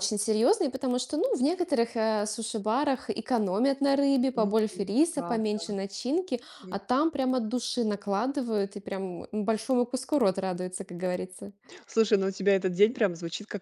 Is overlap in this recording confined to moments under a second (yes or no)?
no